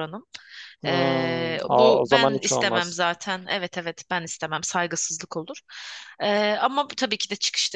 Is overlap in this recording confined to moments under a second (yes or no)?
no